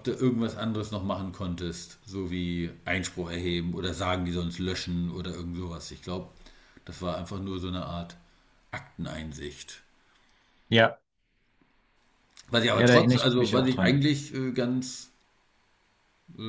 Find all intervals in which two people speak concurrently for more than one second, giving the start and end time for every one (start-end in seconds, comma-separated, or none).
12.7-14.0